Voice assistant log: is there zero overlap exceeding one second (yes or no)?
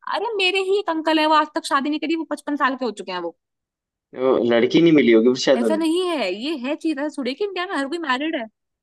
yes